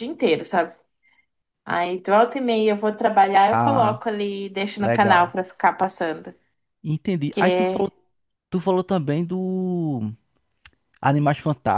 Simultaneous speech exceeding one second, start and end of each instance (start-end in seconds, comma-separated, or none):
none